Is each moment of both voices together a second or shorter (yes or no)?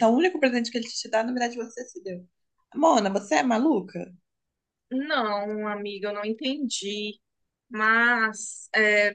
yes